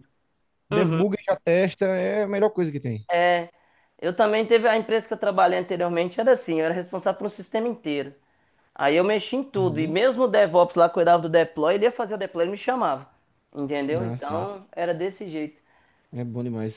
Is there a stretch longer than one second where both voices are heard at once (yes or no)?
no